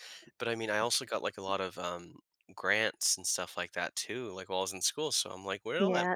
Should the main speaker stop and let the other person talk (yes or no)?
yes